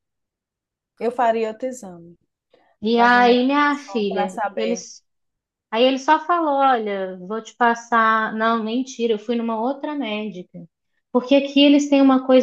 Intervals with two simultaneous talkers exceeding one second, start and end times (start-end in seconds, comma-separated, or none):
2.9-4.9